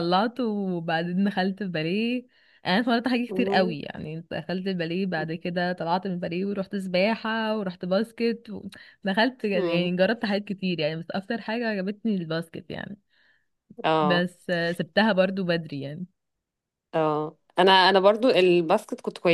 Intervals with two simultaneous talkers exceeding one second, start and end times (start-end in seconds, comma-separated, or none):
none